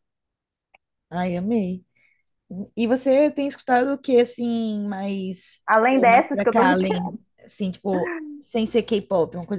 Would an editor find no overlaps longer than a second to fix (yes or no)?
no